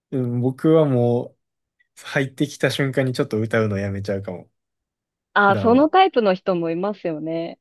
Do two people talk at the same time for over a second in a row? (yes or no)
no